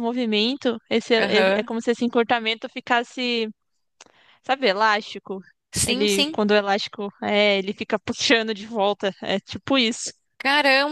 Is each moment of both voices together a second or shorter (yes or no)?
yes